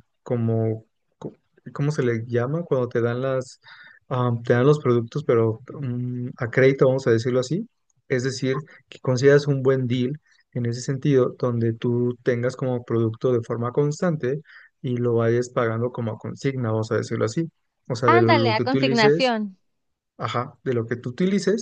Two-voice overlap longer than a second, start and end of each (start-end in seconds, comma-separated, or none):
18.0-19.3